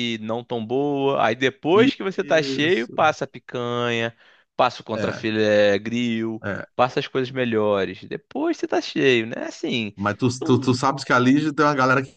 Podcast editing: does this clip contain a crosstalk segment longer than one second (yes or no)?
yes